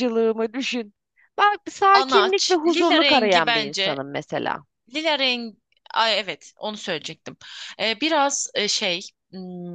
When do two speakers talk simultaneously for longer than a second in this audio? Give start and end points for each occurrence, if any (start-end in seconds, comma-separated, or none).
1.9-4.0